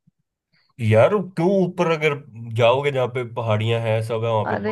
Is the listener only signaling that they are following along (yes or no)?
no